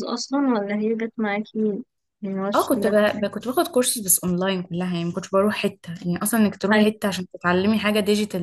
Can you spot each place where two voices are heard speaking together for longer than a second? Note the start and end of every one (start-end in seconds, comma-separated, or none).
none